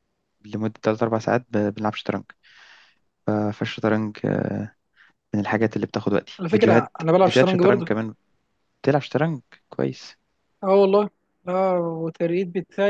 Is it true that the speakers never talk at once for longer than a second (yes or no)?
no